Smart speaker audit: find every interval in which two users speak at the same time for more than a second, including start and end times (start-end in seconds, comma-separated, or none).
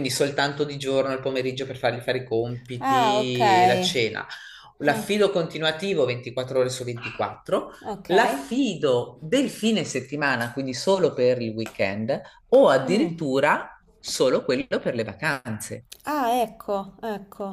none